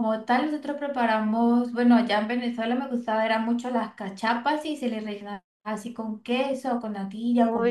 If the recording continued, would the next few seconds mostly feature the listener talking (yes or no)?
yes